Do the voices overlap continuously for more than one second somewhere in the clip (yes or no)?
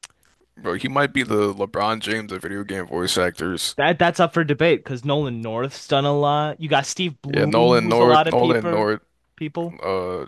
yes